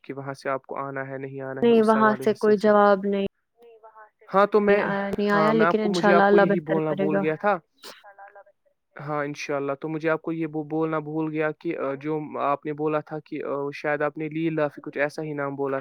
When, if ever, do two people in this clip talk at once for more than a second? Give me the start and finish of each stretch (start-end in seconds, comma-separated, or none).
5.3-7.2